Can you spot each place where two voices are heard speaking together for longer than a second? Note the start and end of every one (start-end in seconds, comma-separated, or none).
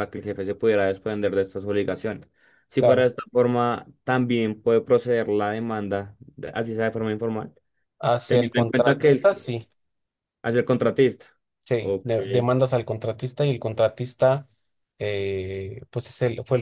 8.3-9.6